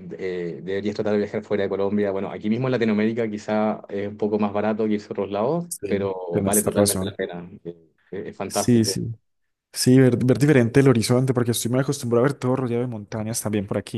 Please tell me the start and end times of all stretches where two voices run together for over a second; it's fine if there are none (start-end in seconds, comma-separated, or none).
5.7-7.2